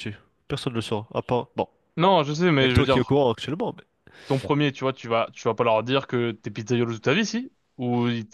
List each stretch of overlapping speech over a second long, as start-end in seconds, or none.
none